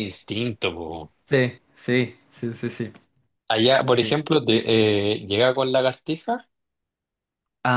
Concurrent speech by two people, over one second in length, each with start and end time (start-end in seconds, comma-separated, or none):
none